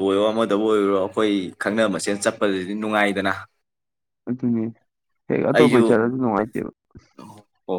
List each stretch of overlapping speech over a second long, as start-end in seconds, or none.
none